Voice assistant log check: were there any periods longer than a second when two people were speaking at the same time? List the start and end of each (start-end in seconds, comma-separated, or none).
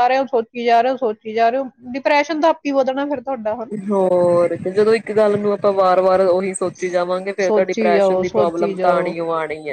7.5-9.1